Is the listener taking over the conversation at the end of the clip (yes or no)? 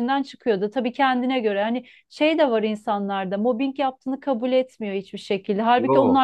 no